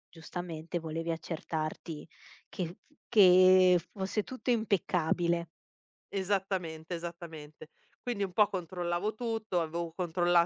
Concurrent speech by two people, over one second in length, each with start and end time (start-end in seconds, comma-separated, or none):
none